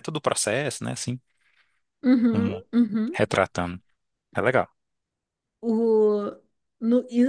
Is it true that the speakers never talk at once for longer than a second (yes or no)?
yes